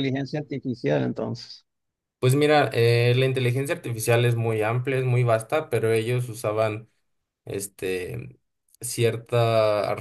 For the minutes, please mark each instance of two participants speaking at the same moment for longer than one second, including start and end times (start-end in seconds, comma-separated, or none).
none